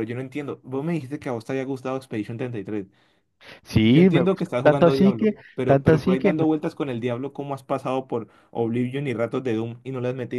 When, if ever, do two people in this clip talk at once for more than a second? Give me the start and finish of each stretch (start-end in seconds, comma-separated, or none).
3.8-6.5